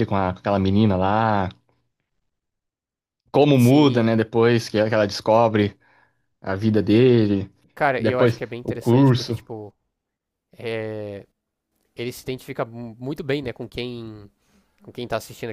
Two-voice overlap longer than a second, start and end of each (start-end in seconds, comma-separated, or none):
8.0-9.4